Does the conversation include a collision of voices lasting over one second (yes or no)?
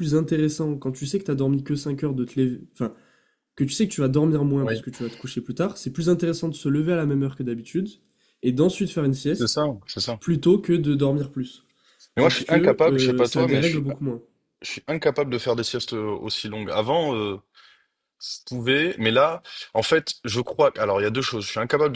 yes